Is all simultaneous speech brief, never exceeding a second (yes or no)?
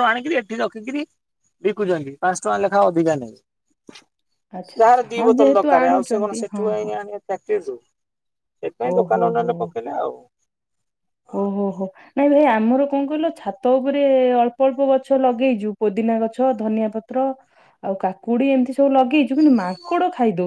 no